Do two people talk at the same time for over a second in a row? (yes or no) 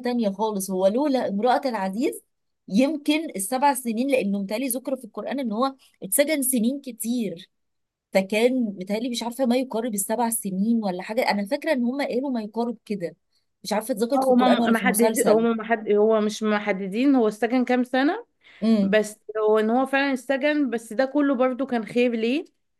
yes